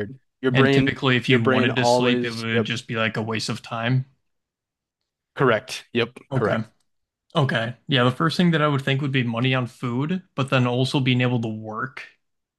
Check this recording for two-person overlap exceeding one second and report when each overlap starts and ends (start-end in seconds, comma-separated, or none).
0.5-2.7